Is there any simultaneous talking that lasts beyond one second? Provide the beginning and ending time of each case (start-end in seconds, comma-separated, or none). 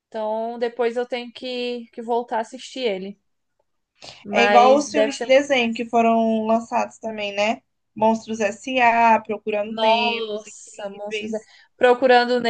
4.3-5.5, 9.6-11.4